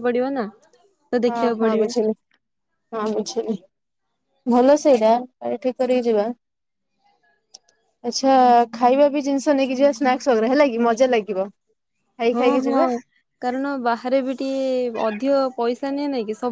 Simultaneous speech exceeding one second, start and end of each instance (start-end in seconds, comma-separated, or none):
none